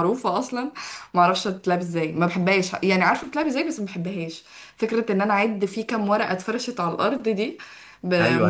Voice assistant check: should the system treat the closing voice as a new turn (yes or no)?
yes